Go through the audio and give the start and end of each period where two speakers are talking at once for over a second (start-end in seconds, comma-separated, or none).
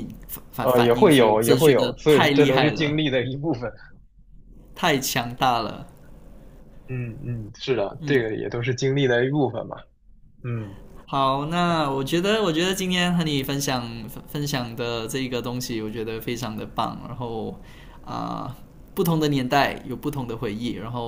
0.6-3.0